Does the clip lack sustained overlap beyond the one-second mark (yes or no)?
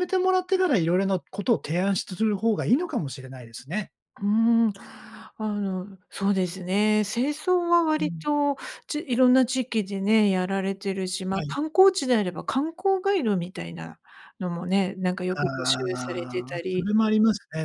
no